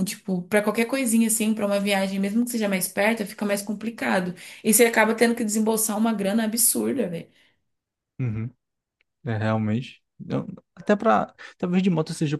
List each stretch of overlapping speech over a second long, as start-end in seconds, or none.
none